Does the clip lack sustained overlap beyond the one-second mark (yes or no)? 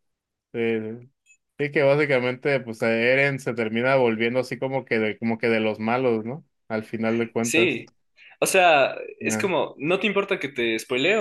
yes